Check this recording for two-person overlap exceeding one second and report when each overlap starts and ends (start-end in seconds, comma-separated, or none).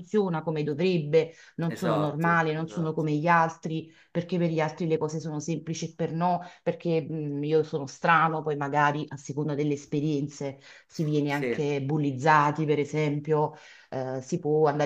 1.7-3.0